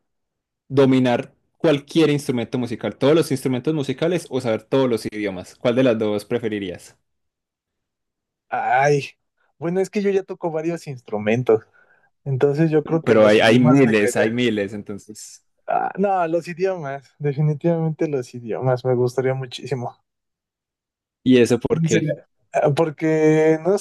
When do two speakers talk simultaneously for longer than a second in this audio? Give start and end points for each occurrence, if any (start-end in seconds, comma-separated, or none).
13.0-14.3